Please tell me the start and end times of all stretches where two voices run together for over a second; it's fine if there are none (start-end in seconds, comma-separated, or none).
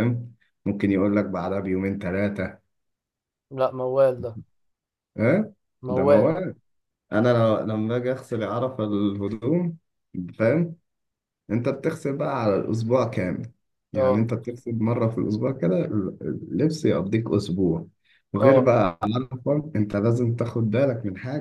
none